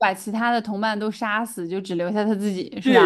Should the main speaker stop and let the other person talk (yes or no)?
yes